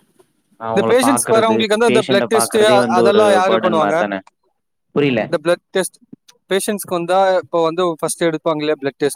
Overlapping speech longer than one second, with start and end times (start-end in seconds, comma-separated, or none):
1.1-4.0